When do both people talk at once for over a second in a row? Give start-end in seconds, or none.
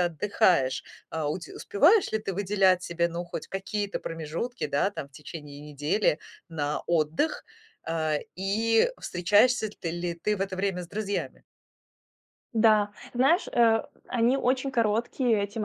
none